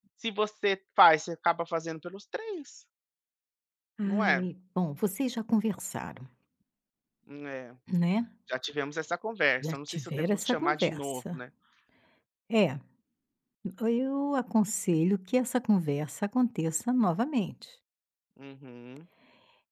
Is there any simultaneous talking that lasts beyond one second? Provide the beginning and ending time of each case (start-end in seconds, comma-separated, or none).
9.6-11.4